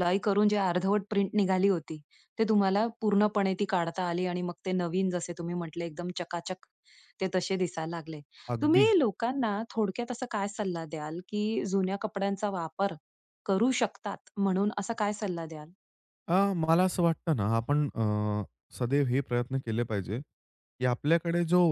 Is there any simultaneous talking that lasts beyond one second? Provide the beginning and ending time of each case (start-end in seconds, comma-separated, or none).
none